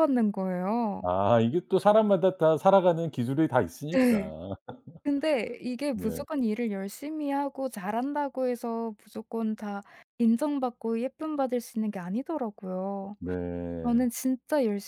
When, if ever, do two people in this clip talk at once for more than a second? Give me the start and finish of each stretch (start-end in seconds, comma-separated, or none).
none